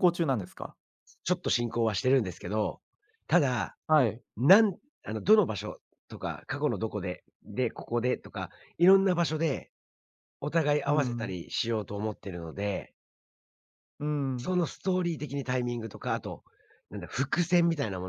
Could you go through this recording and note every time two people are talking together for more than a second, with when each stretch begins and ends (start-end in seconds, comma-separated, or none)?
none